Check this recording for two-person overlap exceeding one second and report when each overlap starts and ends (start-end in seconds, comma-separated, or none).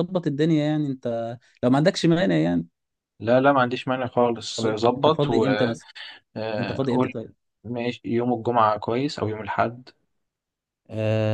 4.6-5.8